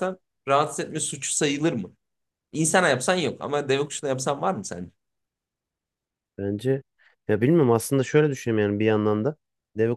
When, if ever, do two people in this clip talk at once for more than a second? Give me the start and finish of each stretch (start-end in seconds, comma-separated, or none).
none